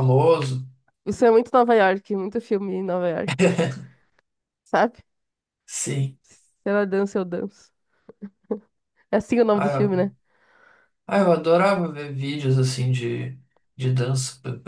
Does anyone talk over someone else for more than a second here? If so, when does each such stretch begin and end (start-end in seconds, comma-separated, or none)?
none